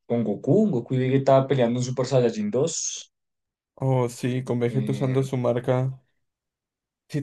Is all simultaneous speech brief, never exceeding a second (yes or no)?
yes